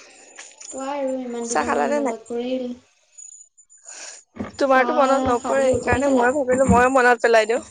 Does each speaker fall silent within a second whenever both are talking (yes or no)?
no